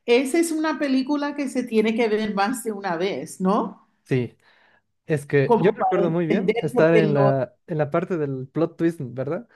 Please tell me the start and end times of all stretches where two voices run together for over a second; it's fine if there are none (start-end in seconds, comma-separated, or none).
5.4-7.3